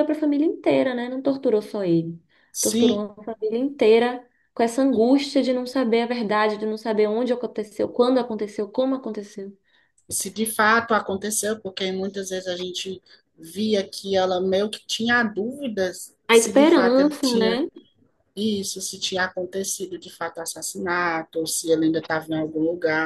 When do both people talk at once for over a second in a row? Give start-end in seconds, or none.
16.3-17.6